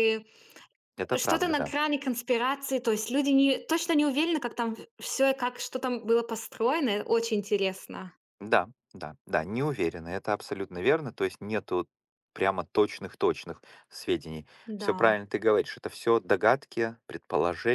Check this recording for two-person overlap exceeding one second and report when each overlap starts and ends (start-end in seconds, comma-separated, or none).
none